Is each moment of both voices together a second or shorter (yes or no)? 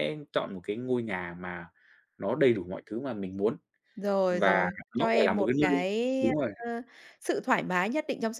no